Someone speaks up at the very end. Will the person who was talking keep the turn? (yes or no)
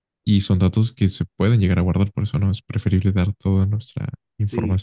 no